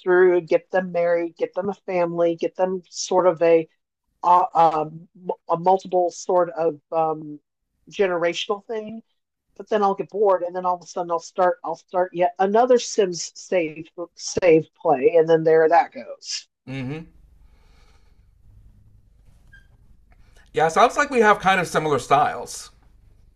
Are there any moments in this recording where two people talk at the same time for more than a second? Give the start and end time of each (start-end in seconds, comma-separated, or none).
none